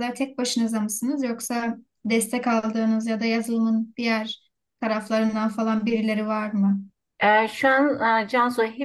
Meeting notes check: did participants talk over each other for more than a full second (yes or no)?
no